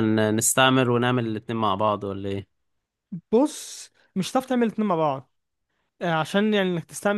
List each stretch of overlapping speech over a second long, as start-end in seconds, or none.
none